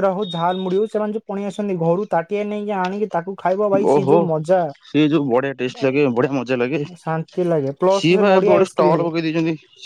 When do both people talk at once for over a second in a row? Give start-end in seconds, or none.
7.0-9.0